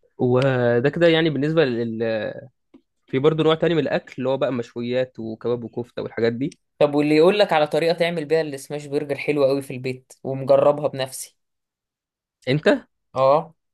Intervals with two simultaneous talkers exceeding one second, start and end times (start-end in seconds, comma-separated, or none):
none